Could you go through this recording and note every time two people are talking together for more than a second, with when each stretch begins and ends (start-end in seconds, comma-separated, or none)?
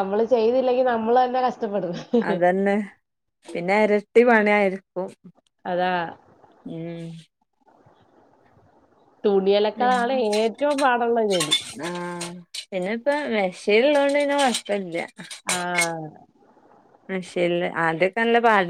none